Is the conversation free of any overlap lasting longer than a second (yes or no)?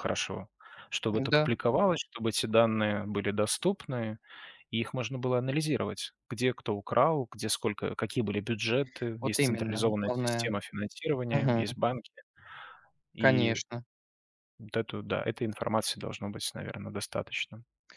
no